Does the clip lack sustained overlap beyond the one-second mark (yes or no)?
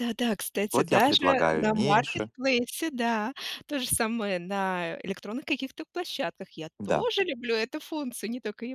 no